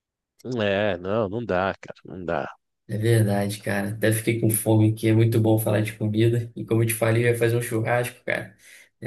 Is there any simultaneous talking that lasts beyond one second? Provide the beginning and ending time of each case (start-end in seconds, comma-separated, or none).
none